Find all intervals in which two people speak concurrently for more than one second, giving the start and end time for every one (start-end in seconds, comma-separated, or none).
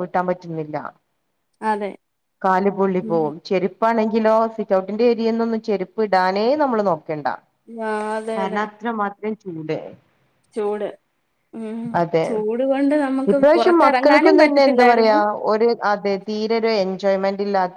13.3-15.2